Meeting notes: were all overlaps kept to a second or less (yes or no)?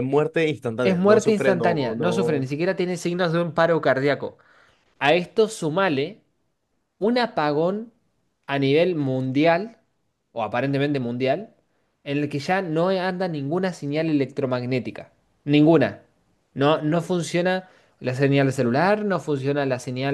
no